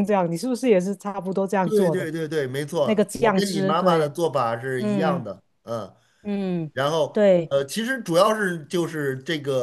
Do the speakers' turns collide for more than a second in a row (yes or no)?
yes